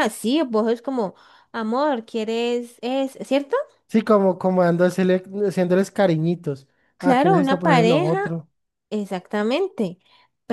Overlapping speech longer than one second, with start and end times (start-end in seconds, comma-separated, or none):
7.0-8.2